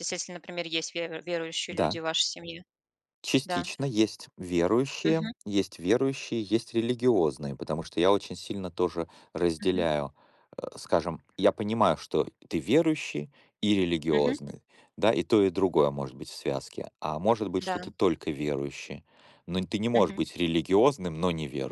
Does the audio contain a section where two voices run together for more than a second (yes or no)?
no